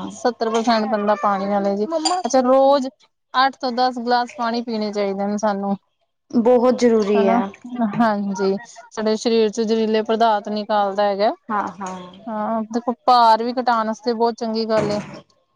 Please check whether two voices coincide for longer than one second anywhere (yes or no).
no